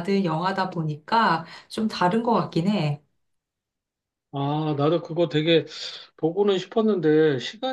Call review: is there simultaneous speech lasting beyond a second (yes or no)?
no